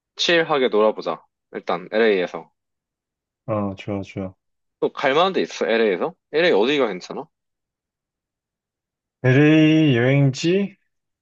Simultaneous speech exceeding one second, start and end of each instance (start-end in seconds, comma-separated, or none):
none